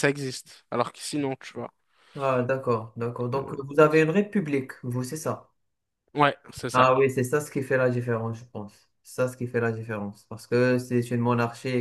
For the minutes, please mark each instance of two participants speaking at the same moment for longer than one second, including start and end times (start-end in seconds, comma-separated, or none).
none